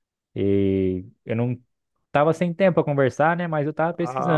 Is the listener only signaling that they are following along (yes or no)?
no